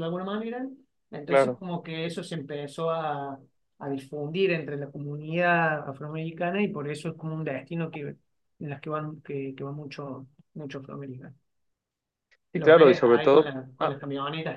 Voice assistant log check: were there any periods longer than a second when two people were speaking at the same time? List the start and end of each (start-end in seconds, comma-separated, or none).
12.6-14.0